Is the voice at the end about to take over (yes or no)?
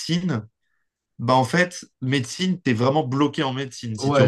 yes